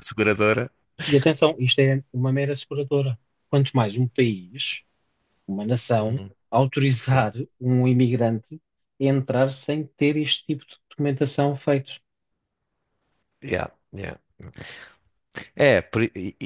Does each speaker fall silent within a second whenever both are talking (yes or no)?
yes